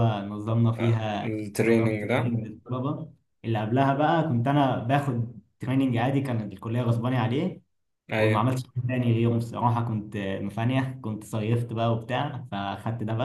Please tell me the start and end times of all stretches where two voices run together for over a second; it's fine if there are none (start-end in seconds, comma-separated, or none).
0.8-2.4